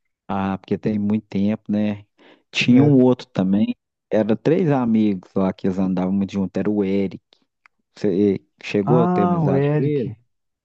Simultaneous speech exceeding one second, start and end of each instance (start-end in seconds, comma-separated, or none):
8.8-10.1